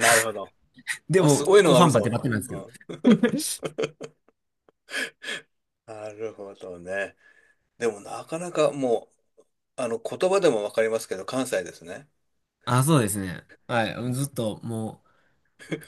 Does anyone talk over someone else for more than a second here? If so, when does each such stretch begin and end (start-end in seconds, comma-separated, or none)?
1.2-2.6